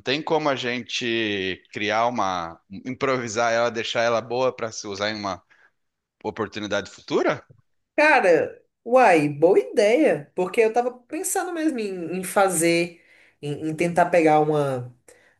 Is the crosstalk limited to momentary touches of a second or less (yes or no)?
yes